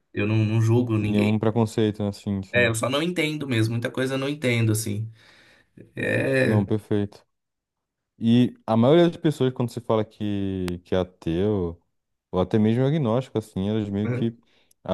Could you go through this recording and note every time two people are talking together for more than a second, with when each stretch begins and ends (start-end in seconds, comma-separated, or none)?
none